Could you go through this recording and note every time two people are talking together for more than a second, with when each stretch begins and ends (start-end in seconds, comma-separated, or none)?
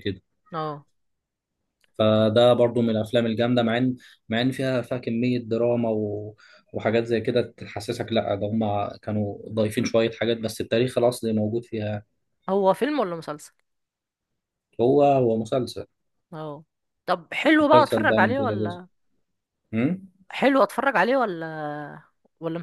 17.6-18.8